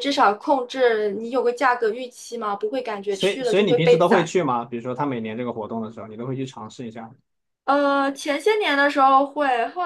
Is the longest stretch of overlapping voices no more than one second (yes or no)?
no